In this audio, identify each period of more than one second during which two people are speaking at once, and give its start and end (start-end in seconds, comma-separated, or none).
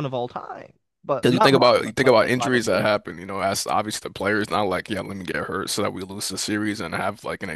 1.2-2.9